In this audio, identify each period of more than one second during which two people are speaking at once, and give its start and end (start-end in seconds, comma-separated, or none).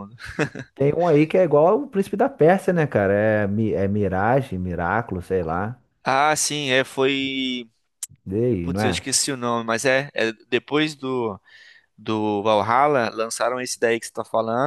none